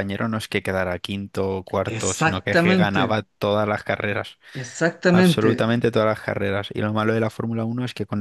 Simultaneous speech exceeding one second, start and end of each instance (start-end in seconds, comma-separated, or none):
1.9-3.2